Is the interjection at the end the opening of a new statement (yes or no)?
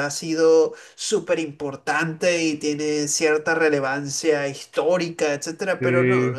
no